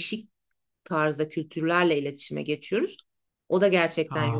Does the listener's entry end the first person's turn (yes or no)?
no